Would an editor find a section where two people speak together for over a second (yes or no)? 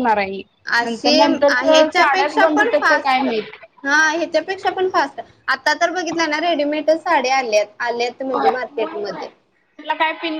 yes